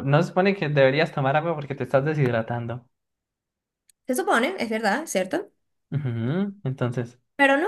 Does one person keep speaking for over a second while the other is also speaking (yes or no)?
no